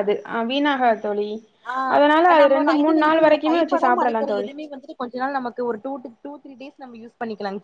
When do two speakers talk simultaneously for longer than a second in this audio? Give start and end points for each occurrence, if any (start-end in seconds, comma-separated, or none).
2.3-4.5